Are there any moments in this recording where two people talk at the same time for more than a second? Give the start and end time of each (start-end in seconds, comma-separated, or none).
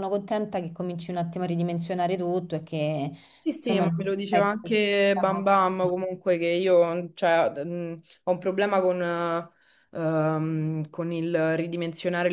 3.6-6.0